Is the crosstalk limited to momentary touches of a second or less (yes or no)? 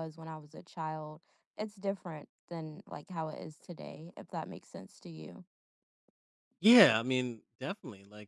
yes